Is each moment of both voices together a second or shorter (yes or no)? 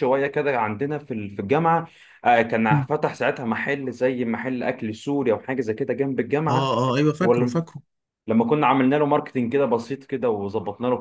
yes